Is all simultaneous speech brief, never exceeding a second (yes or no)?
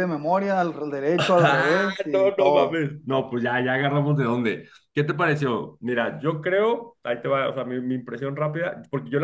no